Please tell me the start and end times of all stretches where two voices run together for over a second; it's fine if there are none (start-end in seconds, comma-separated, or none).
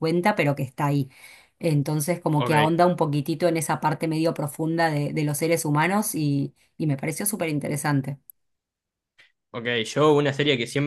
none